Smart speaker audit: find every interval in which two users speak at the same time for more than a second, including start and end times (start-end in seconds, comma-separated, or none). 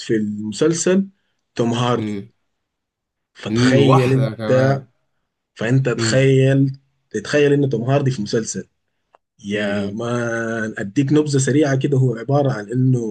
3.5-4.8